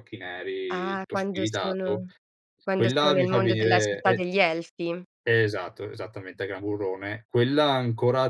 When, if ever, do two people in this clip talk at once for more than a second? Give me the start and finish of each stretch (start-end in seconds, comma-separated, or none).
0.7-2.0, 2.8-4.2